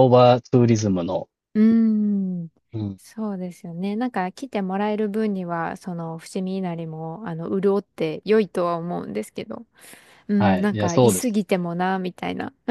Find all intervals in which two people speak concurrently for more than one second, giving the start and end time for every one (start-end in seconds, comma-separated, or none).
10.4-11.7